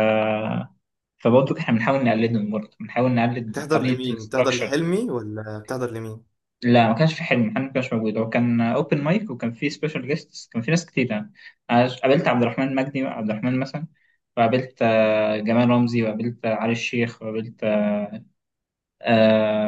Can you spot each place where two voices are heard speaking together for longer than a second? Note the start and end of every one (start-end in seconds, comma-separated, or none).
3.5-4.8